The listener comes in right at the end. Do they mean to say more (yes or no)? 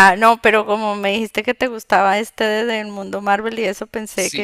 yes